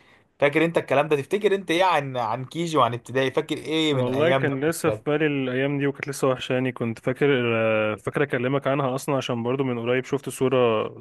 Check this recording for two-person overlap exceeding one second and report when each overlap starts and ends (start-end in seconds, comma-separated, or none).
3.9-5.2